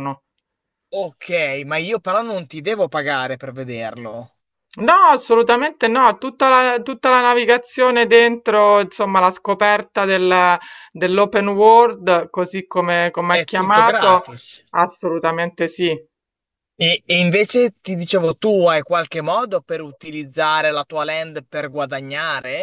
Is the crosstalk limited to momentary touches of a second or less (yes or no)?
no